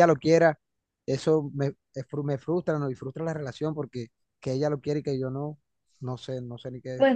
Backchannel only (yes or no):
no